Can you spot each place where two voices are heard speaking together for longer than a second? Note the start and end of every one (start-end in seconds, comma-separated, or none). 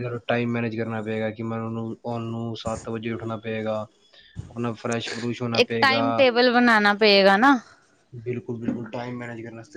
none